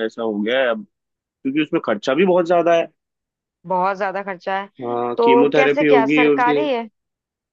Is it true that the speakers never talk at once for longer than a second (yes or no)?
no